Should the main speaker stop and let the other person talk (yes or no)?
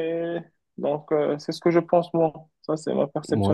yes